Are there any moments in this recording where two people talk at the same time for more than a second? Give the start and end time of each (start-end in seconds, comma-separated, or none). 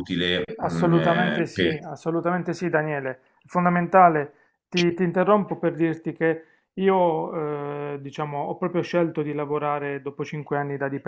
0.6-1.8